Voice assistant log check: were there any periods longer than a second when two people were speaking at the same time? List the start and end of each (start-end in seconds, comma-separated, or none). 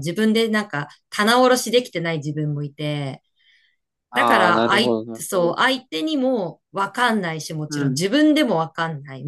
4.1-5.5